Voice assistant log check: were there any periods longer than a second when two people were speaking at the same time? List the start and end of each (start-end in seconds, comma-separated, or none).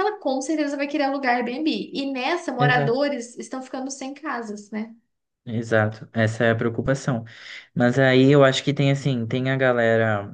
none